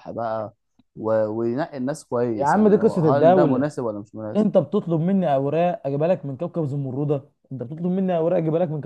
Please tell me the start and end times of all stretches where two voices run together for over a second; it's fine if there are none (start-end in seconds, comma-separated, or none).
2.3-3.7